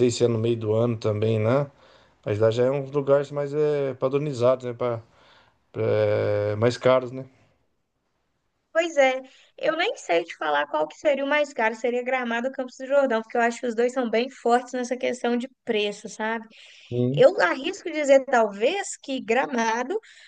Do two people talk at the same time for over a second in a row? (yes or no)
no